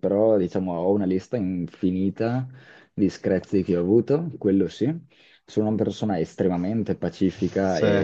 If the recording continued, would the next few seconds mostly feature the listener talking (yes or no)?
no